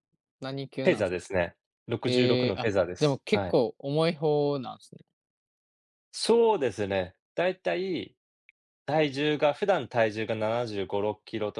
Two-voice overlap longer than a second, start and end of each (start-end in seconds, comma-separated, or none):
2.1-3.6